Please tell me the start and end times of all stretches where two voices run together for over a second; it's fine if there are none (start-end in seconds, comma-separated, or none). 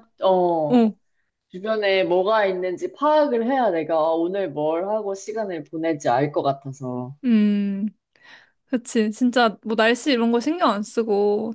none